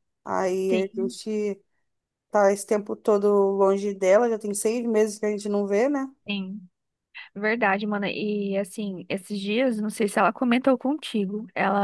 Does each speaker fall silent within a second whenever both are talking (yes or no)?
yes